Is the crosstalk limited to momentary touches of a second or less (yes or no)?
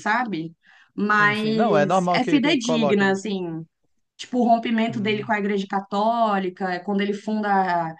no